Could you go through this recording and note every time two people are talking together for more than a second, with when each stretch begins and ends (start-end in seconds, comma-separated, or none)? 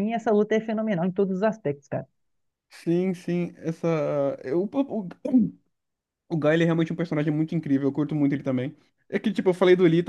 none